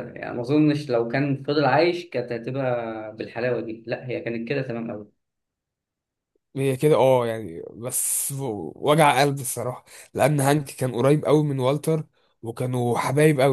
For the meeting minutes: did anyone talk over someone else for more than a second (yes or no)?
no